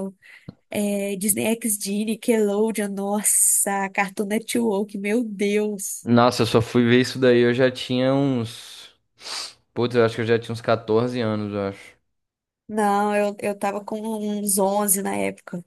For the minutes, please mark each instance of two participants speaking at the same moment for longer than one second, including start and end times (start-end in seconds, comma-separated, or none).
none